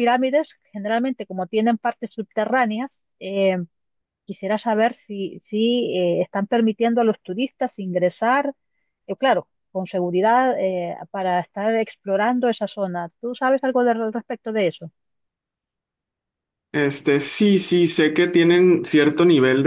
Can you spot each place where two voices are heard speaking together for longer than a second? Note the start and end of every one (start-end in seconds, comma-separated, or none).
none